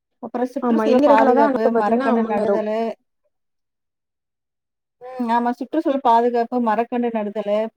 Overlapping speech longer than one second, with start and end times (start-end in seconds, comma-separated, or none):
0.7-2.6